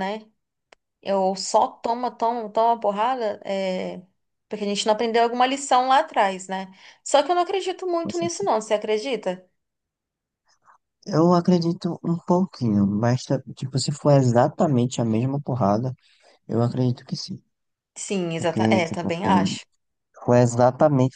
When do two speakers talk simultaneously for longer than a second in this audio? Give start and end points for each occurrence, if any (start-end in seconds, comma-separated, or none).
18.4-19.6